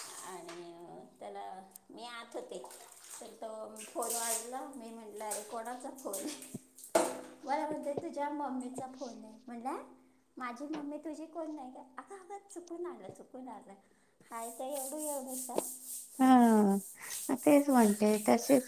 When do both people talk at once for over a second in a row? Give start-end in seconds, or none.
none